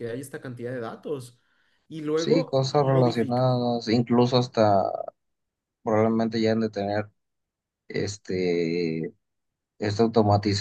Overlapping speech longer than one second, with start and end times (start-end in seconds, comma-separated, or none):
2.2-3.5